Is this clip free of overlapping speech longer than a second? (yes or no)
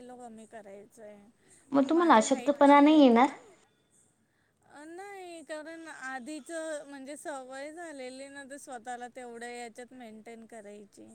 no